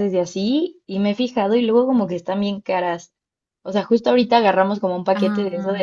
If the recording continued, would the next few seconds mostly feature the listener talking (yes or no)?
no